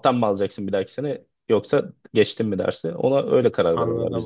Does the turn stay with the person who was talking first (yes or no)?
no